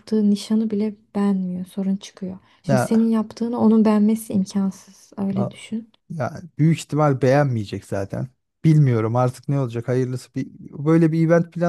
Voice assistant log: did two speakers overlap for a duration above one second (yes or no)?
no